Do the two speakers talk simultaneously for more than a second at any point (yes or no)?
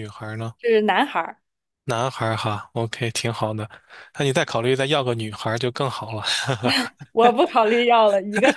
no